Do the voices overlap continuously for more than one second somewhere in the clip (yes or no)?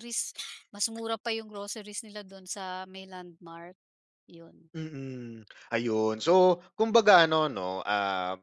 no